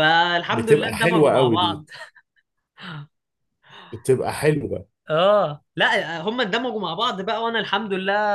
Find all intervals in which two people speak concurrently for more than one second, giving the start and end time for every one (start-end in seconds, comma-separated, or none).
0.5-1.8